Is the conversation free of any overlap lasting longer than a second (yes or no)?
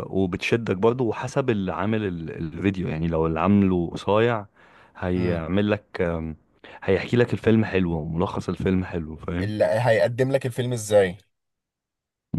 yes